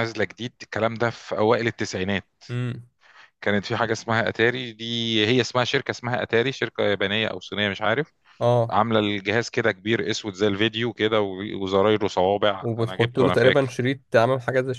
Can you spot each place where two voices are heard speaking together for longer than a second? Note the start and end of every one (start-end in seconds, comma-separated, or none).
12.6-13.8